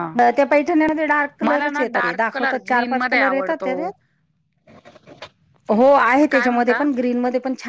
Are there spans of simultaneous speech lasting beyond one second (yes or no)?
yes